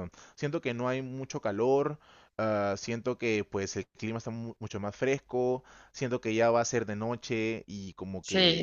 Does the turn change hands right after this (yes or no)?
no